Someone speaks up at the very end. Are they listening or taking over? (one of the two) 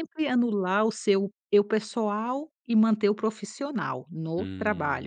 taking over